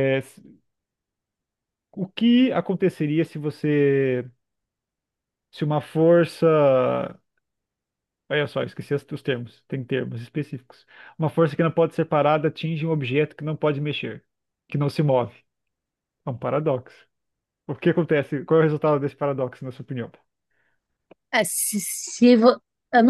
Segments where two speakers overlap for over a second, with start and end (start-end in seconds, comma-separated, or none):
none